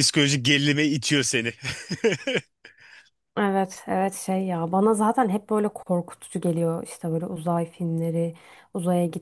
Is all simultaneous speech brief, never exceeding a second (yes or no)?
yes